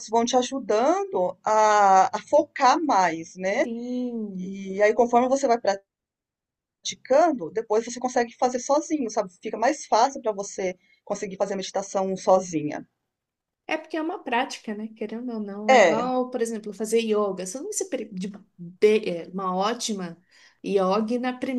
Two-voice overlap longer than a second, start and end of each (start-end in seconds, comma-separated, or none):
none